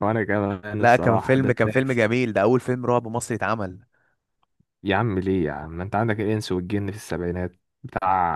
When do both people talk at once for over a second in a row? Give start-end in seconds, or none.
0.8-2.1